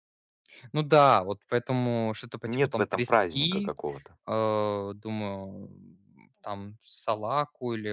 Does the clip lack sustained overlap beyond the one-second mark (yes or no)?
no